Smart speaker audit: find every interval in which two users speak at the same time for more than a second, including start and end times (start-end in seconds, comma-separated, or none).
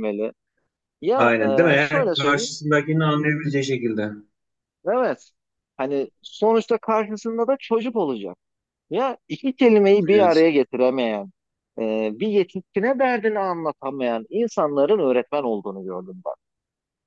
1.1-2.6